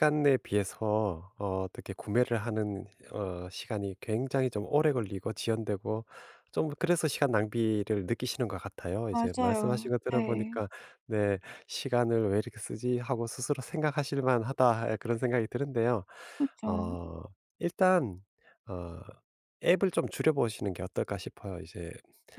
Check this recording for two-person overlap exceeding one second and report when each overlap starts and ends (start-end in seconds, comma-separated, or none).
9.1-10.6